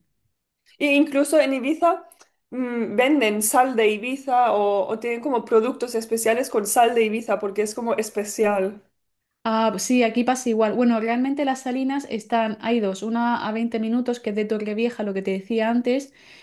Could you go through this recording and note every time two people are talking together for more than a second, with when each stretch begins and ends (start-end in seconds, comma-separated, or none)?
none